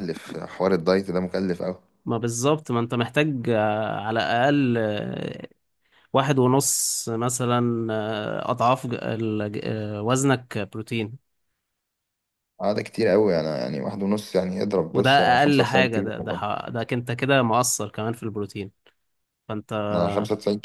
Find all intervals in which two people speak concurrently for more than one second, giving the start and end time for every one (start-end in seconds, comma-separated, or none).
14.9-16.4